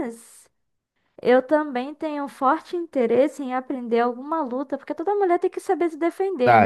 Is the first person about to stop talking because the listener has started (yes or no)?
yes